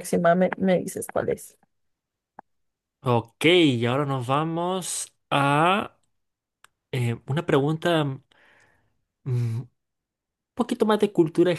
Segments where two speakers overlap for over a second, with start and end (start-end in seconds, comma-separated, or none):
none